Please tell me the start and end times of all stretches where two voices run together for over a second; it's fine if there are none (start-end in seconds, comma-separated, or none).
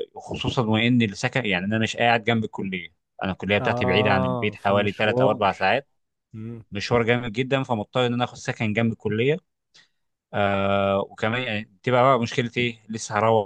3.6-5.5